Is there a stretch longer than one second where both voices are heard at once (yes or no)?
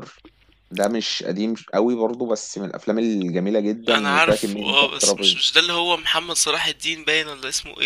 yes